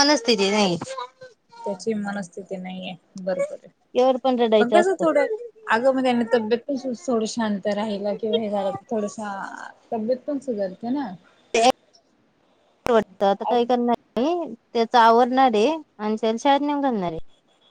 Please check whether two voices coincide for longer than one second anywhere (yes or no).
no